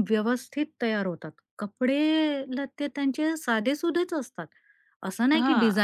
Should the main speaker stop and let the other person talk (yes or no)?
no